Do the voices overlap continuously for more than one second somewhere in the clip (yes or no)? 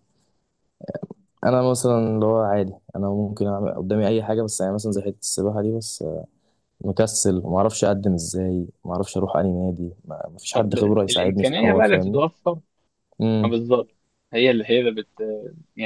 yes